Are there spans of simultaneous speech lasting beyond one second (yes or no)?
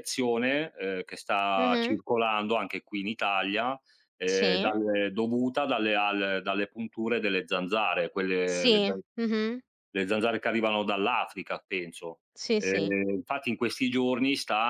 no